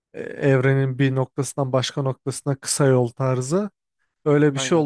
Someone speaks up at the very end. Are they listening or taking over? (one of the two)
listening